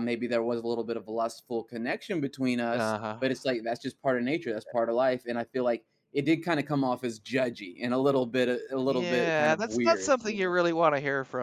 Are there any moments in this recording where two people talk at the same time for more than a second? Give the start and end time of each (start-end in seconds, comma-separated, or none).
8.8-10.5